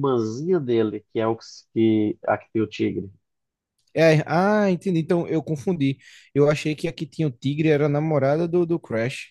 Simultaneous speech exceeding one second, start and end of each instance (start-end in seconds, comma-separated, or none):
none